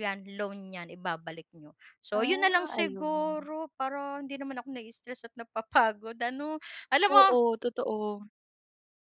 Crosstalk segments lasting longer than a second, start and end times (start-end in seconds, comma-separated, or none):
2.1-3.5